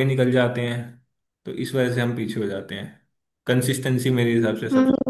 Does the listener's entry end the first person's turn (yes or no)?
yes